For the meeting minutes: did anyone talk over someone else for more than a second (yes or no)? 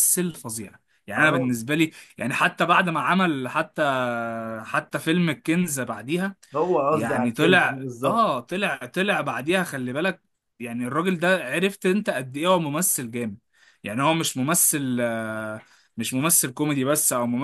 yes